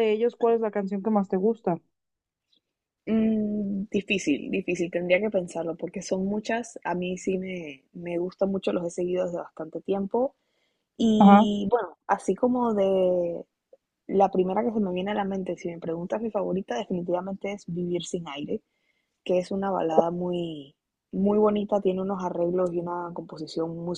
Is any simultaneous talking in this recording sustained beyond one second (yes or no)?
no